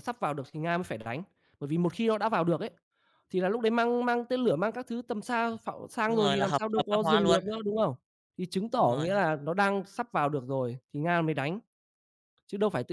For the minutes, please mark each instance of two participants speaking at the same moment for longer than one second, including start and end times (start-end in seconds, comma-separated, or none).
6.0-7.4